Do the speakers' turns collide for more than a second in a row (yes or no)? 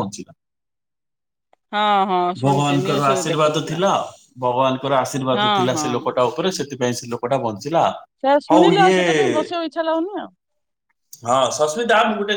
yes